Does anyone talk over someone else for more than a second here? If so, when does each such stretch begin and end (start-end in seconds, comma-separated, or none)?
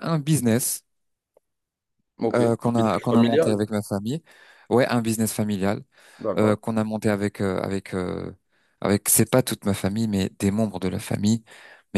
2.3-3.6